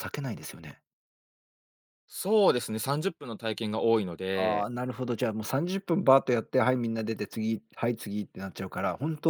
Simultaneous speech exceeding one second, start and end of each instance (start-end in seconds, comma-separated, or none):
none